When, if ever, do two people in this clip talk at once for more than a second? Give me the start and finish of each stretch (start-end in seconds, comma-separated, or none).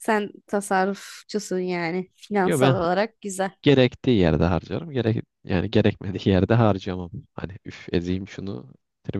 none